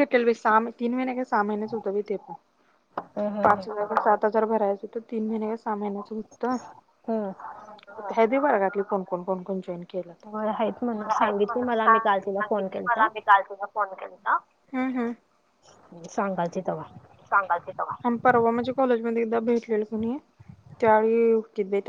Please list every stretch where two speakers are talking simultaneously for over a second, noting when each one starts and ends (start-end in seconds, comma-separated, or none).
10.3-12.2